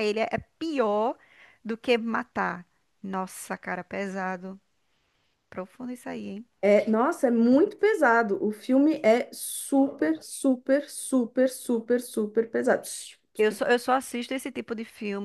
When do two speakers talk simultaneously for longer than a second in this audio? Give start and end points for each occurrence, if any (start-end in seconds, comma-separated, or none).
none